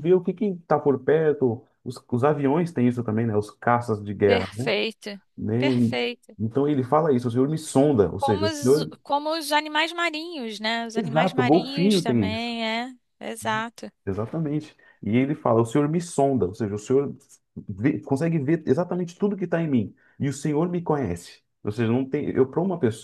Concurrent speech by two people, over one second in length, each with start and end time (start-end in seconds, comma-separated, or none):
11.0-12.5